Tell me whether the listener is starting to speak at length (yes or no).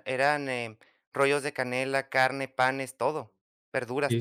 yes